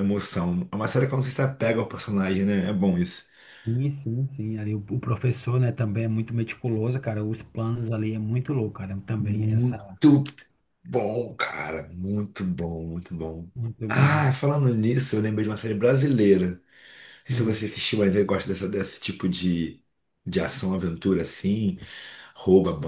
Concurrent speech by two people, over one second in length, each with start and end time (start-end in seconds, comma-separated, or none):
none